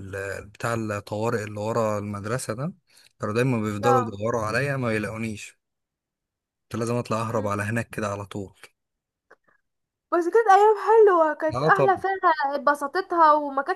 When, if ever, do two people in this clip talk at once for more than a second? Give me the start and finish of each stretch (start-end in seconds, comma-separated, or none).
none